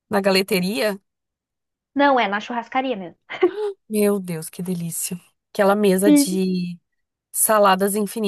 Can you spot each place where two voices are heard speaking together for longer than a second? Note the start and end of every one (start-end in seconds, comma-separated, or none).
none